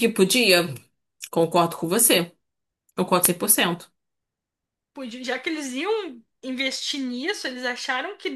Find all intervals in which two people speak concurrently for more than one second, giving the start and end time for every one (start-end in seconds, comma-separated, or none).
none